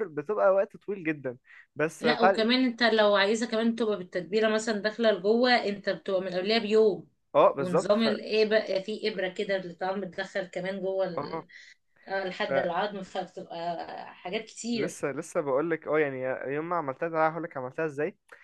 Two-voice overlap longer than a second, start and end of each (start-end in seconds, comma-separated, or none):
none